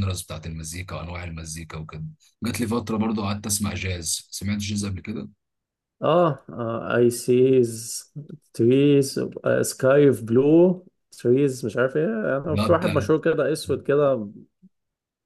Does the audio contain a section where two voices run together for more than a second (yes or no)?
no